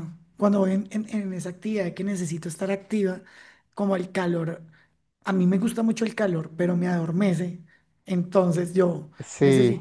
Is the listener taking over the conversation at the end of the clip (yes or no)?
no